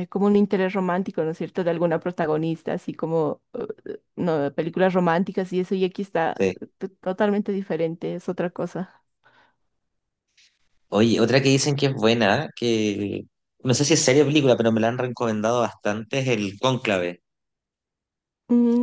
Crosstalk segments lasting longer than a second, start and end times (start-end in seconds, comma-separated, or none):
none